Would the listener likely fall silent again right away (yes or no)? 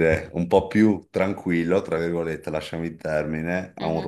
yes